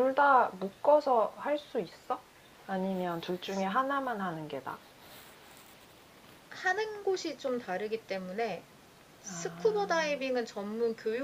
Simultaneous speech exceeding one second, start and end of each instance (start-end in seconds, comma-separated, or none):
none